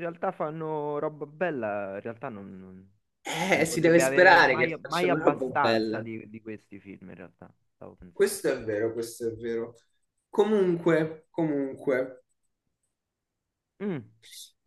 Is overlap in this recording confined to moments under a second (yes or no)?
no